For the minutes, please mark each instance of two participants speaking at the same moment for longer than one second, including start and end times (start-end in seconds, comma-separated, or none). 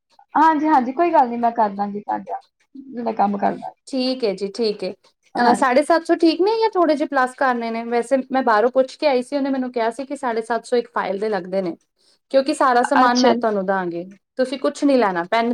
none